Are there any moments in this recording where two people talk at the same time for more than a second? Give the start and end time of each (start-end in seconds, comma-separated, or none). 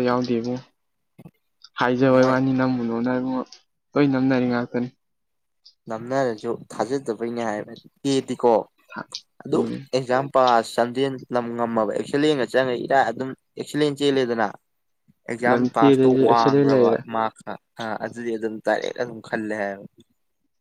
15.5-17.0